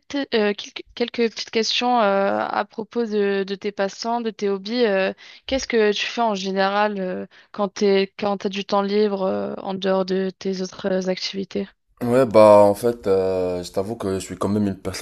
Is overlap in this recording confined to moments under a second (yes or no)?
yes